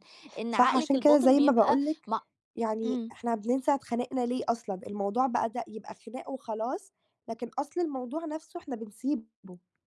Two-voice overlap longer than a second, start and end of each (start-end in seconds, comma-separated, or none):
0.5-2.1